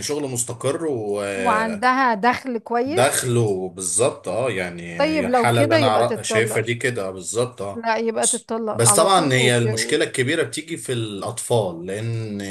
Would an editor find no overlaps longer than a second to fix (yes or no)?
no